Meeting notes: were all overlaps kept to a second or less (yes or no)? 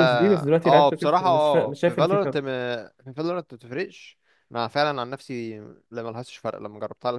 no